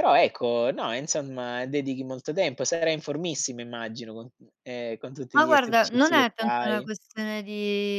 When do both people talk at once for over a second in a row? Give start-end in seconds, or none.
5.3-6.9